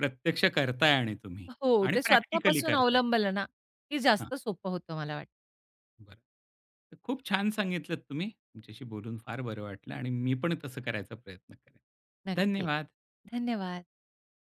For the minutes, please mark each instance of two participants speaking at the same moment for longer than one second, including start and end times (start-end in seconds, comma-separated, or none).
1.5-3.0